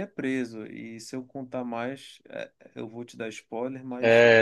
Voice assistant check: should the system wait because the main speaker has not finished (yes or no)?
no